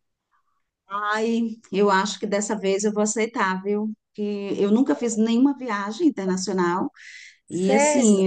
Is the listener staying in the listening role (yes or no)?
yes